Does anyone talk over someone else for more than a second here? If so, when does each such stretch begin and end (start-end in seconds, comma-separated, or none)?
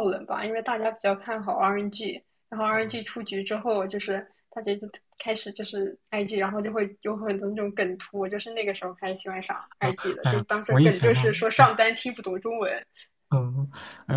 9.8-11.7